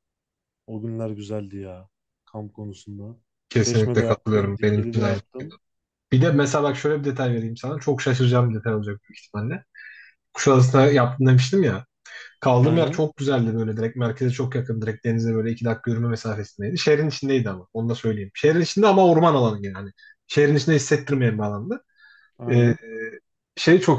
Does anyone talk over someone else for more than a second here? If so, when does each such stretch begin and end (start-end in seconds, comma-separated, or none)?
3.6-5.5